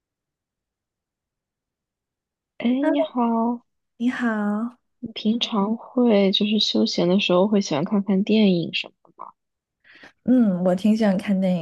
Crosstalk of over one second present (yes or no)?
no